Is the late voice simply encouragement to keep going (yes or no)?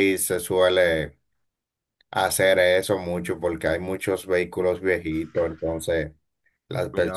yes